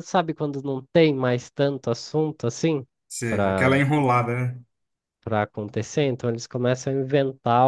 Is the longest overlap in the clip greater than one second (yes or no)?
no